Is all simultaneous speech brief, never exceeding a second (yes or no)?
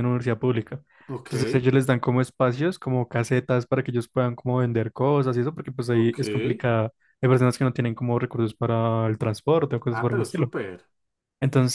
yes